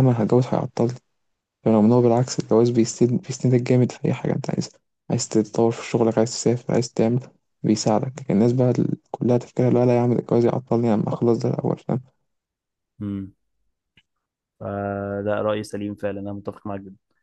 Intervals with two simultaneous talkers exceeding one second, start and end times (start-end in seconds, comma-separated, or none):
none